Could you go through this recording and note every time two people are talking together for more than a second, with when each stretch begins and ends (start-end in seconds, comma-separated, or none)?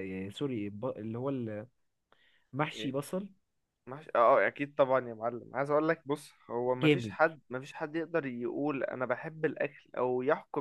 none